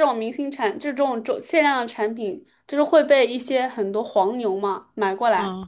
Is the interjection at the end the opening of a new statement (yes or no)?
no